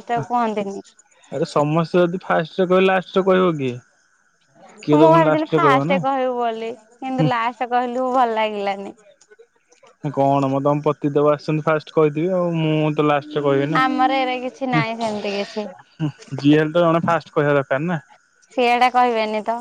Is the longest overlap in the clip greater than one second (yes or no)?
no